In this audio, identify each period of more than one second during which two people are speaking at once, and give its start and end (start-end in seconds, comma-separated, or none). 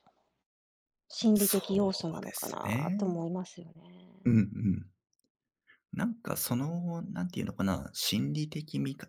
1.3-3.2